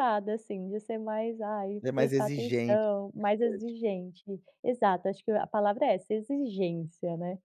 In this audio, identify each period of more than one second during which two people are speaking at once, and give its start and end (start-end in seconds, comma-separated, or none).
1.8-3.8